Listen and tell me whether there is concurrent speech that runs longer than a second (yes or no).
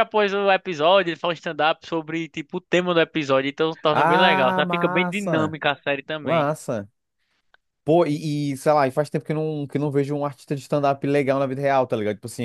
yes